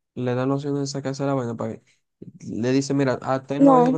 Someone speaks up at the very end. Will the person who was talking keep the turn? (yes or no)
yes